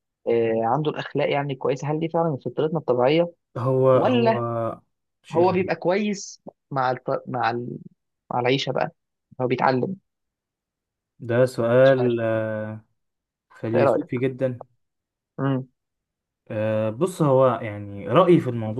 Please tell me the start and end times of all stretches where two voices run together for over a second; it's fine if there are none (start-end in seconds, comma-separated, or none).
none